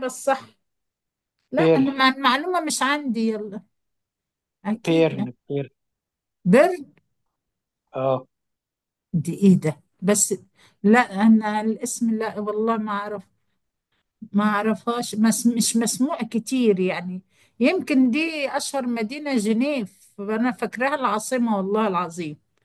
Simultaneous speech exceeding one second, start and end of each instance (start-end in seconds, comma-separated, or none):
none